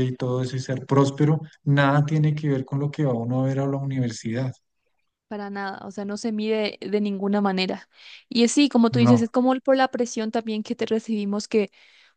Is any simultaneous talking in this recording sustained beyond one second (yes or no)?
no